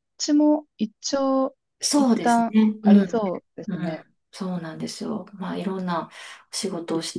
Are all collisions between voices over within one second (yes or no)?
no